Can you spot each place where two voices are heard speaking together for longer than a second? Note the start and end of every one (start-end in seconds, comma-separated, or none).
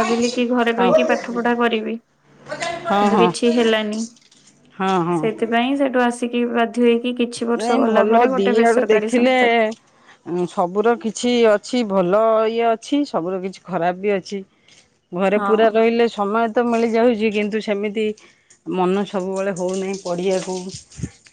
7.5-9.3